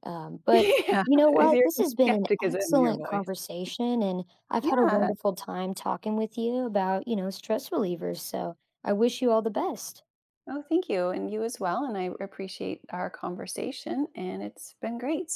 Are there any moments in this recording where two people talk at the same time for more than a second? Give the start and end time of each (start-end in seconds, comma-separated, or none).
1.4-3.3